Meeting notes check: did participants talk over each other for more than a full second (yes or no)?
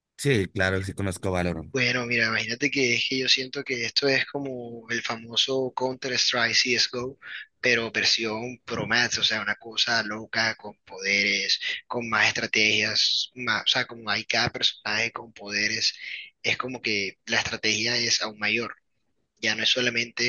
no